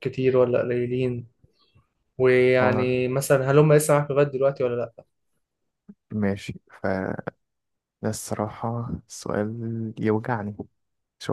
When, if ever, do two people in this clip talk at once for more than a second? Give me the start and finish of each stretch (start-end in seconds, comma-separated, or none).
none